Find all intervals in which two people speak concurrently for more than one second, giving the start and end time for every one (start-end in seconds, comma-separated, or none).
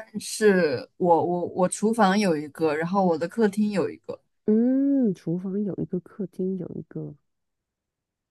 none